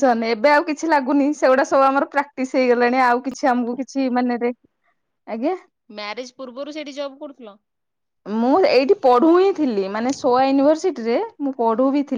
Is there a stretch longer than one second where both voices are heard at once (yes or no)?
no